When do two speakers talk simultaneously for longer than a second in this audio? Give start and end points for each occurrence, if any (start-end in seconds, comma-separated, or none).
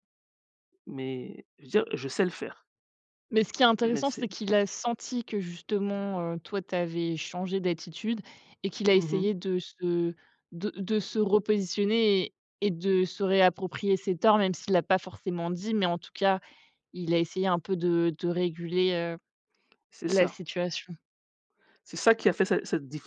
none